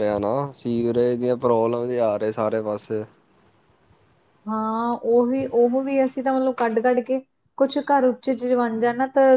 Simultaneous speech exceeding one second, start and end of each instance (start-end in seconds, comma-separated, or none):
none